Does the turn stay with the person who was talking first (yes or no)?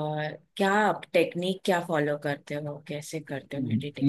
no